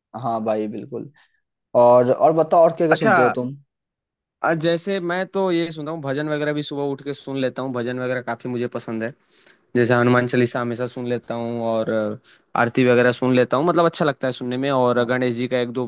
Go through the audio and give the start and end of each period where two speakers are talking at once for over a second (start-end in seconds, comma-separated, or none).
none